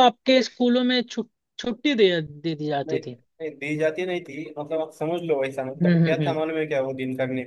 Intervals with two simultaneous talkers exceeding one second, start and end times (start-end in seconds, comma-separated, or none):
none